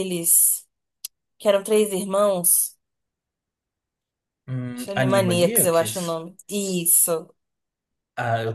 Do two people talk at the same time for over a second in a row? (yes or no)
yes